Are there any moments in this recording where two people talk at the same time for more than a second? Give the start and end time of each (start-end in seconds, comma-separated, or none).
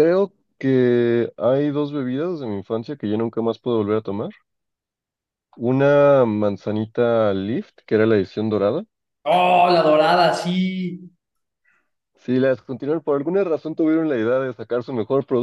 none